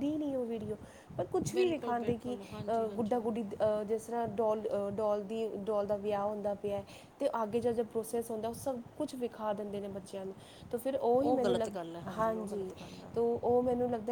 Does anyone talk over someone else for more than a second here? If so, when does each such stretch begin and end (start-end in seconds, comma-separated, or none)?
1.5-3.2